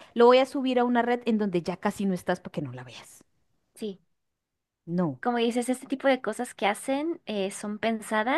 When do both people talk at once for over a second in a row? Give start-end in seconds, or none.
none